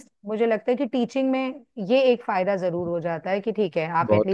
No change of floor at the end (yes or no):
no